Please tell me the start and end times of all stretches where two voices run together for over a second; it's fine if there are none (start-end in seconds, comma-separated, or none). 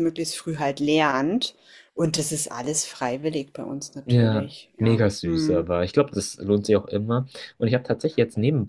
4.0-5.7